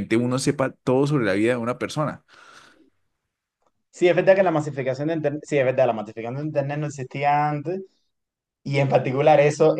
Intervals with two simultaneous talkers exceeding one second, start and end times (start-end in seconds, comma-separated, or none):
none